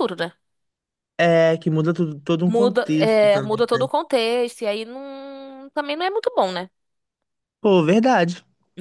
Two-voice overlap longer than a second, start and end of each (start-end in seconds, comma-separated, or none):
2.5-3.9